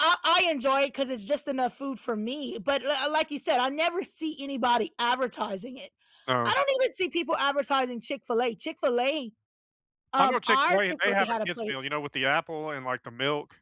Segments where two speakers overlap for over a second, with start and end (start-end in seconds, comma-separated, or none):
10.2-11.8